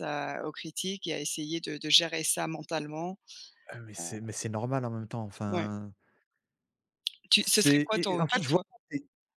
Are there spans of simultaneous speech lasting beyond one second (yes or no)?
yes